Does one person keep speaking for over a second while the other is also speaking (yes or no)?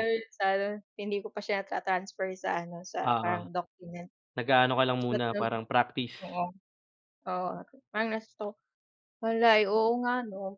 no